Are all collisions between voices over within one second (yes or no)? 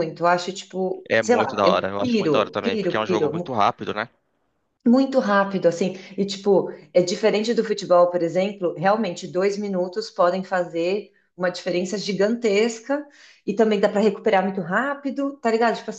no